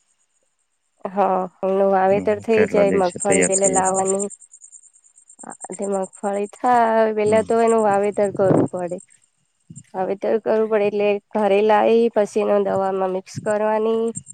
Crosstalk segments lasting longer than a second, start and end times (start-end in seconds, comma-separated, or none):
2.1-4.0